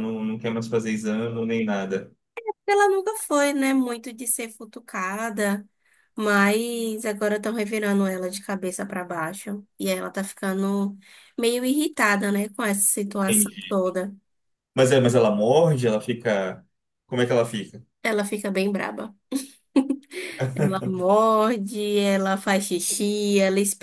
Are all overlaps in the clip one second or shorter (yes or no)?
yes